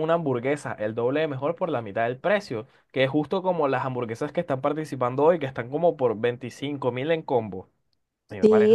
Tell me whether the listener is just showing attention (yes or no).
no